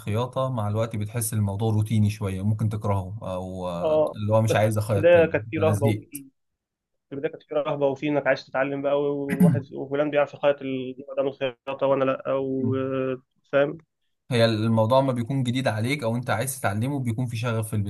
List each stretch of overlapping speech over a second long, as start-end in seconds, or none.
3.8-6.1